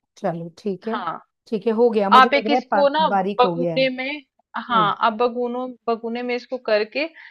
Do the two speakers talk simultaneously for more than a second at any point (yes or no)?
yes